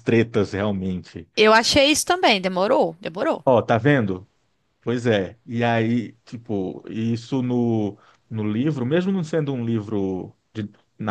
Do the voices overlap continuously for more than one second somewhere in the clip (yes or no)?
no